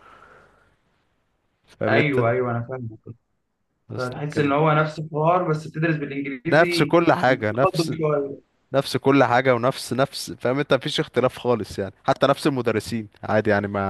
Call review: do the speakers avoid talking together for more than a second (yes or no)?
no